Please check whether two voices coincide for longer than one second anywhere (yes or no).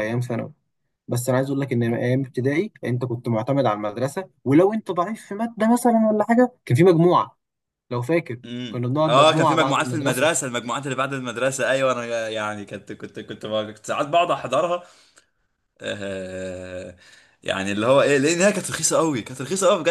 yes